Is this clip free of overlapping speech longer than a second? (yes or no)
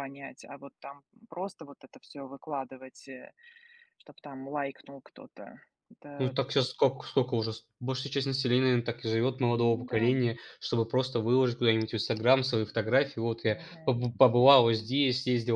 yes